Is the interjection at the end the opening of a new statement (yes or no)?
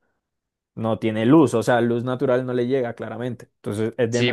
yes